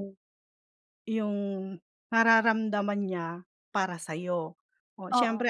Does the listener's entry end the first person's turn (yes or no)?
no